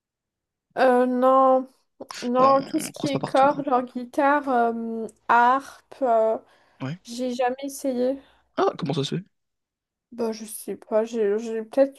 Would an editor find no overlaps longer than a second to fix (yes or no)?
no